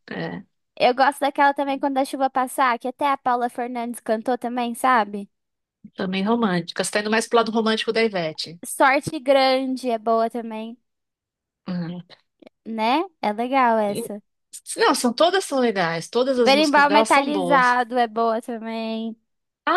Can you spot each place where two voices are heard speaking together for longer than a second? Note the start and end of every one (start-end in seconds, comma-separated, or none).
16.4-17.8